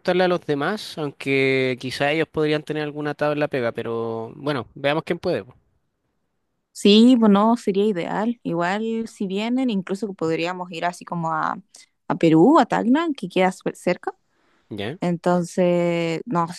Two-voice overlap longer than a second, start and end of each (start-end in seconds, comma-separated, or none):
none